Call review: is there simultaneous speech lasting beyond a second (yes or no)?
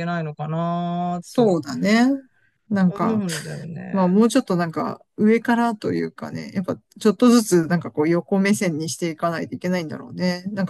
no